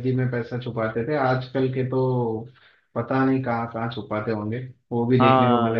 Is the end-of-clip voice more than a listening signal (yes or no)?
yes